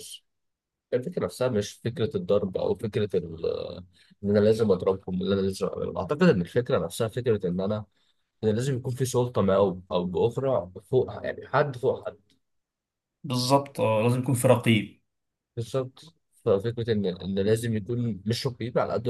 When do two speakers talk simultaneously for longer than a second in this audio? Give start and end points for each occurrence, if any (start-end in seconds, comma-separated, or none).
none